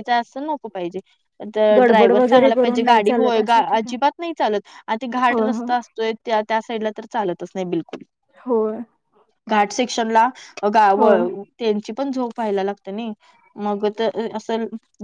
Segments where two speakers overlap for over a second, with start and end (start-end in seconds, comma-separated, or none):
1.8-4.0